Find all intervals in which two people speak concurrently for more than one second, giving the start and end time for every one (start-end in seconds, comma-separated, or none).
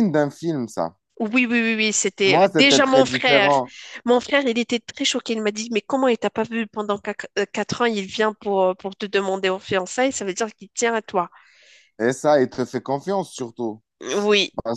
2.2-3.5